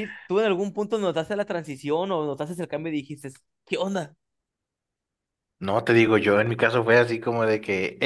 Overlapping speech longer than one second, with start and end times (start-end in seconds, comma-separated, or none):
none